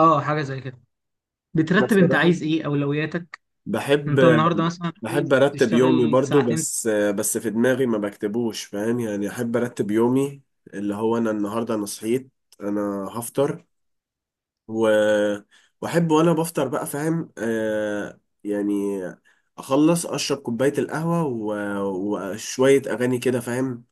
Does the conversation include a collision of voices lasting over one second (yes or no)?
yes